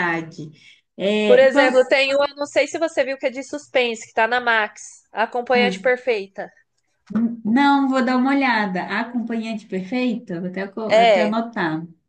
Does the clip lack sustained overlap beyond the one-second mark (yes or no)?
yes